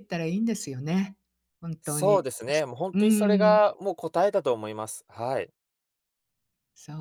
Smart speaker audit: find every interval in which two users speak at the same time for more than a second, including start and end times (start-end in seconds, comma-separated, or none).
1.8-3.6